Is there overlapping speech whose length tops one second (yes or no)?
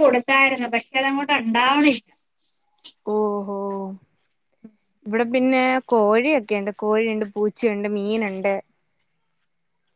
no